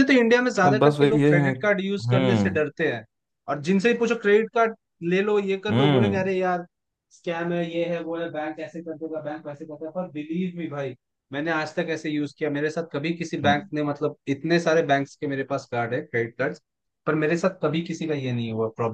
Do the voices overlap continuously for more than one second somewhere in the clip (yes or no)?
yes